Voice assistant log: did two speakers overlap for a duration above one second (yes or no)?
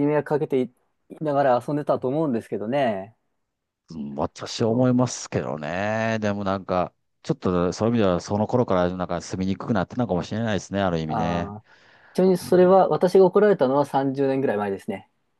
no